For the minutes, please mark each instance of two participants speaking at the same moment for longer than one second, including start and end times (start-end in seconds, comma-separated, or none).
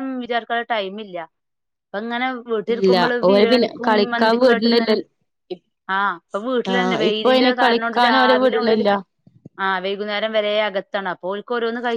2.8-4.9, 6.7-8.8